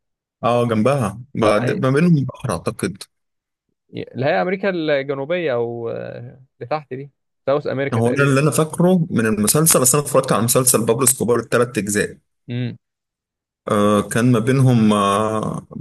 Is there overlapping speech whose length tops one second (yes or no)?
no